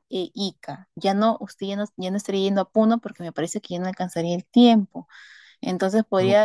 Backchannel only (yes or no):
yes